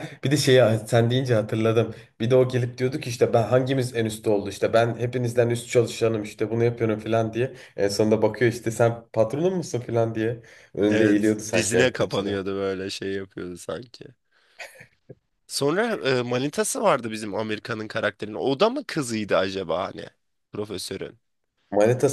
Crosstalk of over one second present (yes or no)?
yes